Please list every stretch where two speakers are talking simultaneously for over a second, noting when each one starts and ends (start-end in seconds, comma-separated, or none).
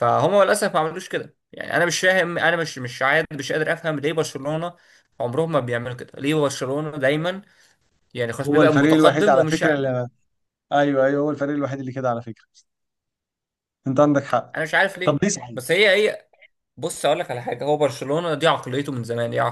8.4-9.7